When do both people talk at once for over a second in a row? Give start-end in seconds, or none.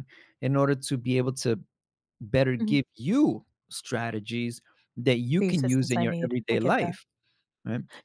5.4-7.0